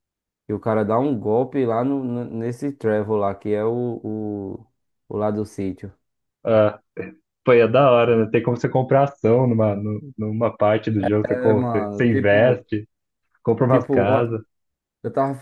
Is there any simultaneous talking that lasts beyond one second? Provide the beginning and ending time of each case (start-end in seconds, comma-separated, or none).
11.2-12.6